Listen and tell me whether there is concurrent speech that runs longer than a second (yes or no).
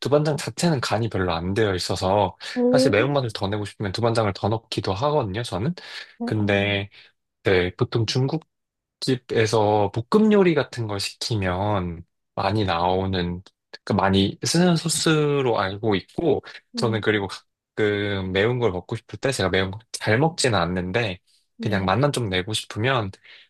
no